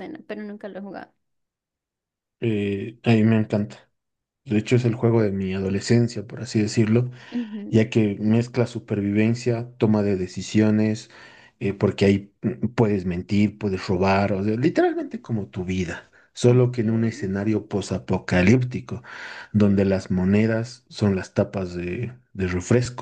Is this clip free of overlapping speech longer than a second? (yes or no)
yes